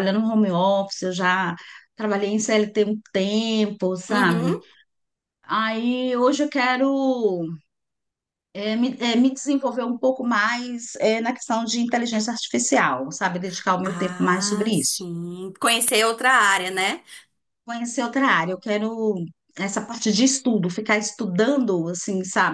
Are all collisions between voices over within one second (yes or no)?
no